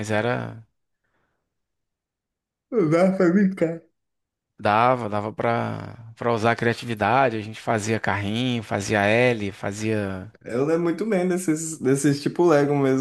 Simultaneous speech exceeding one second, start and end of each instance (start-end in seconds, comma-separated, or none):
none